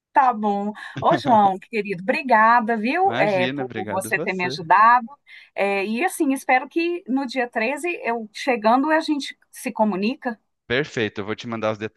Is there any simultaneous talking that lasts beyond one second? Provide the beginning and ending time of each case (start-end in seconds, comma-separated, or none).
3.0-4.6